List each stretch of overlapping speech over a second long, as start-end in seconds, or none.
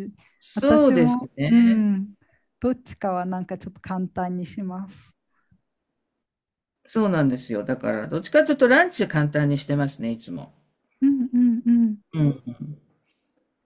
0.5-1.9